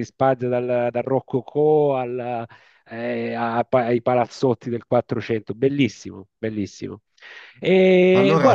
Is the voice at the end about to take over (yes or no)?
yes